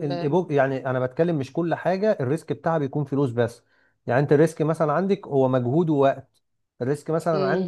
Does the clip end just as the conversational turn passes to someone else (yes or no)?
no